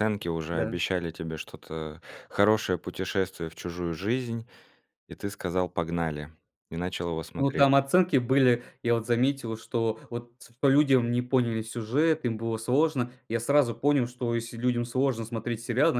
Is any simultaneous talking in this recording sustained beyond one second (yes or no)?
no